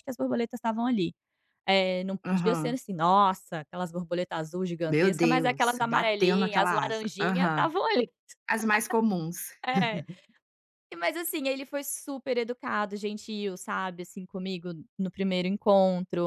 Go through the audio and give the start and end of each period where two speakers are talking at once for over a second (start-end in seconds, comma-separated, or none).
4.9-7.7